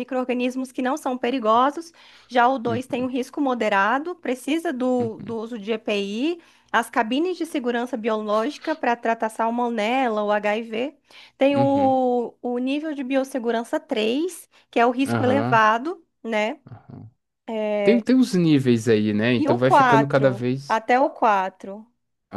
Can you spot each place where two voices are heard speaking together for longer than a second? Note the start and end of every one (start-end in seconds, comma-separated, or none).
19.3-20.8